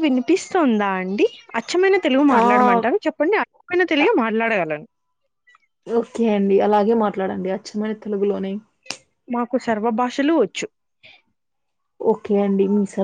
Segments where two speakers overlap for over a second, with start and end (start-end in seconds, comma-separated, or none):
none